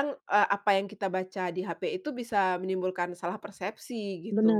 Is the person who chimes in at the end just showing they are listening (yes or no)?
no